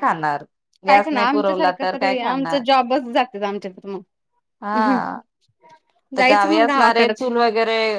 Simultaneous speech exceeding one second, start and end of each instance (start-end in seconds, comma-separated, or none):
0.9-2.6